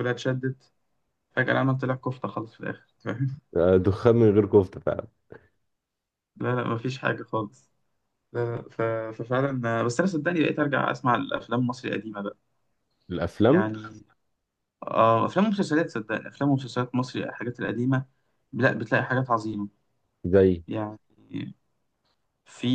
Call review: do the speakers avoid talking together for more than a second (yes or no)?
yes